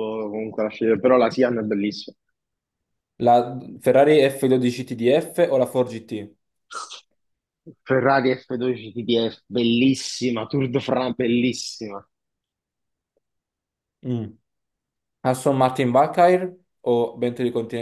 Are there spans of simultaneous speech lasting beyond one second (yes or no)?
no